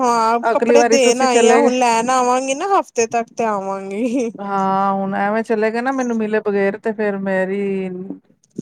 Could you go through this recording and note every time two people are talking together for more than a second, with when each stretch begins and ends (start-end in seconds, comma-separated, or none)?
0.5-1.7